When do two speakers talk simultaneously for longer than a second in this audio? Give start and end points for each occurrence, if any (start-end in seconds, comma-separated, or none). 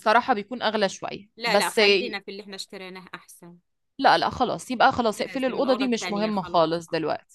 5.0-6.8